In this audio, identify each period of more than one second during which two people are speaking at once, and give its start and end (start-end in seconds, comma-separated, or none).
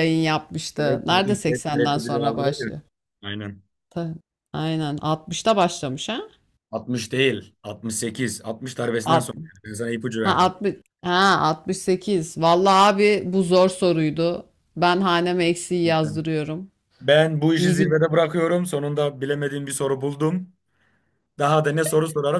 0.8-2.7